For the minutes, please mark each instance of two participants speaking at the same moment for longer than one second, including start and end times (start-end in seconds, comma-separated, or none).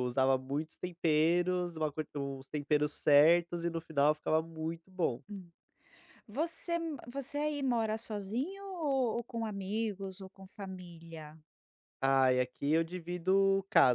none